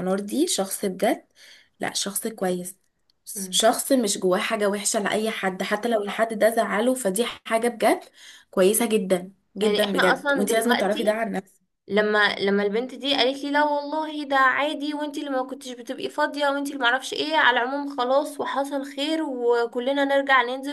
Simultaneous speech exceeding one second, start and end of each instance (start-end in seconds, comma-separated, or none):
9.6-11.2